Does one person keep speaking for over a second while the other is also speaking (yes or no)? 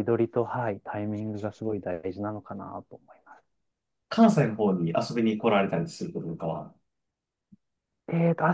no